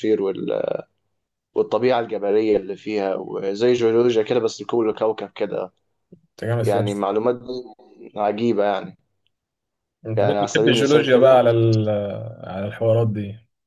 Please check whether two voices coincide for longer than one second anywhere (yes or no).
yes